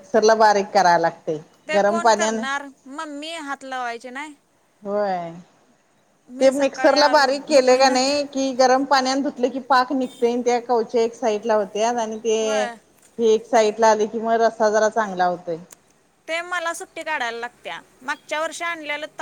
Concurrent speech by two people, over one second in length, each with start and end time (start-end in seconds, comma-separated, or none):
6.4-8.1